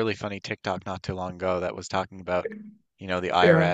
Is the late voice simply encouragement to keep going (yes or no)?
yes